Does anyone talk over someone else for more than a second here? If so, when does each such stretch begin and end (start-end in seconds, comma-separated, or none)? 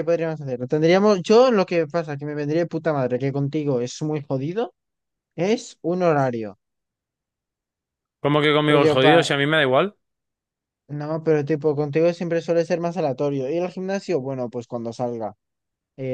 none